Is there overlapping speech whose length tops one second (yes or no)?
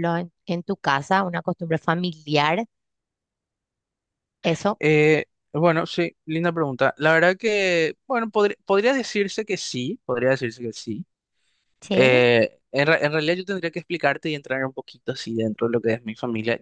no